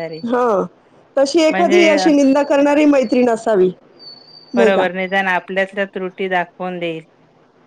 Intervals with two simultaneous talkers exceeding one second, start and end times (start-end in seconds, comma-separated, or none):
none